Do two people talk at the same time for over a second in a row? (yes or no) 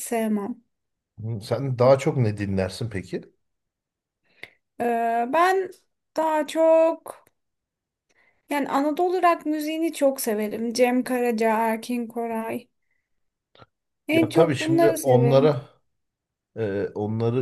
yes